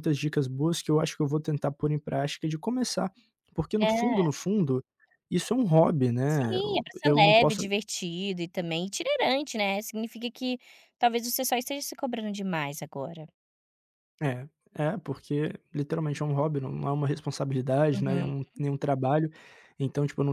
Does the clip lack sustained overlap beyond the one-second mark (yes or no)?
no